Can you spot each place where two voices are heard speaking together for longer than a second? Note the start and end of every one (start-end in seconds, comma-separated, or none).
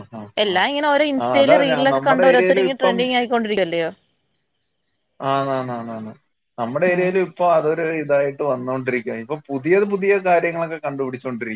1.4-3.0